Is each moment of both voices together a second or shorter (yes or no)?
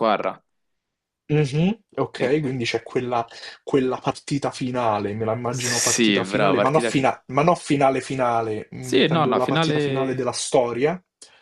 no